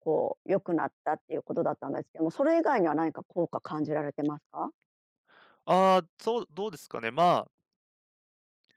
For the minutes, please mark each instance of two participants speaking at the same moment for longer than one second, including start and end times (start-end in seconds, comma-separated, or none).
none